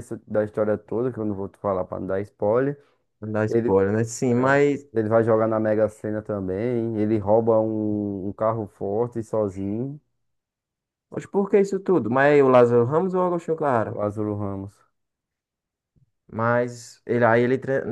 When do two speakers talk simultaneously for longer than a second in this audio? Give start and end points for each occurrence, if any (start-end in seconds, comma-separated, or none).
none